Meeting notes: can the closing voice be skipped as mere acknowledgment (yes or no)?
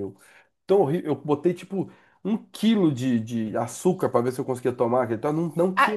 no